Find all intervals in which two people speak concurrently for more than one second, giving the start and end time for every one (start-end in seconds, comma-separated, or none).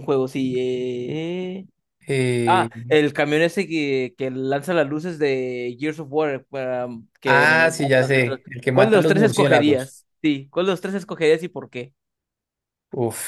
7.2-9.9